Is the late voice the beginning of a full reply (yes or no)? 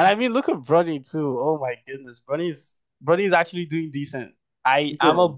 no